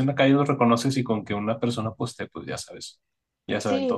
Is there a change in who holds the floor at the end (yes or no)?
yes